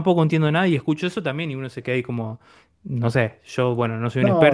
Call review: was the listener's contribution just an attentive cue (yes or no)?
yes